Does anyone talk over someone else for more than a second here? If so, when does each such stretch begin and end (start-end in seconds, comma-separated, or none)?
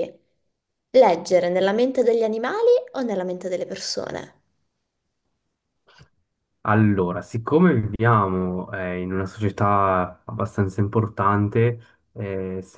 none